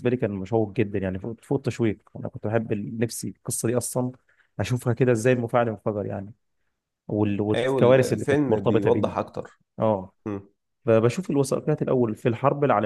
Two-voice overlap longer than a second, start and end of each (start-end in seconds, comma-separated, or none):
7.5-9.1